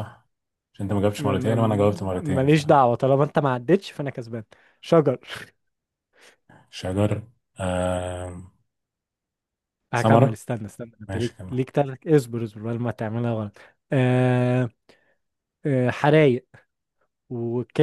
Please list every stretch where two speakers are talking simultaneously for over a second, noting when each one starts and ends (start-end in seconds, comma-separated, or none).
1.2-2.5